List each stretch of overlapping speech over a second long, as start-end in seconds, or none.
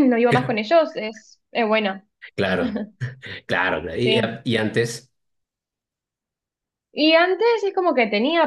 none